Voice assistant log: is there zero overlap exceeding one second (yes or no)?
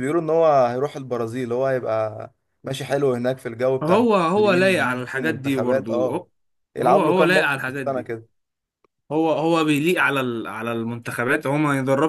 no